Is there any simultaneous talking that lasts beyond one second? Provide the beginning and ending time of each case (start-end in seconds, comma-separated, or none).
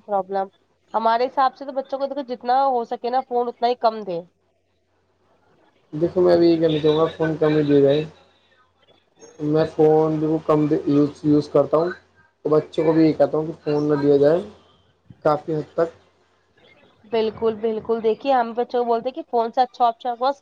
none